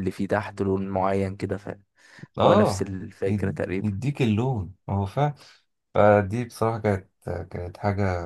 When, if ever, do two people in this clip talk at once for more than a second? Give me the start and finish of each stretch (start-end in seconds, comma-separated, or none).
2.4-4.0